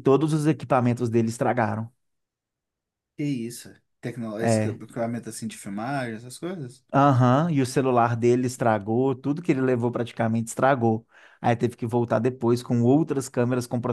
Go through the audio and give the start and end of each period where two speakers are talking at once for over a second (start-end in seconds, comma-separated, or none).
none